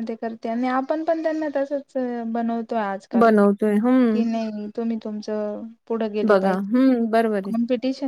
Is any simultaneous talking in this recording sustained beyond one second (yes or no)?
yes